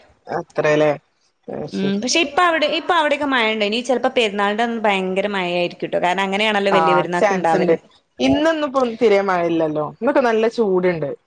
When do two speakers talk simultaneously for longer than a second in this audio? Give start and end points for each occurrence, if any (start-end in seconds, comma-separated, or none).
none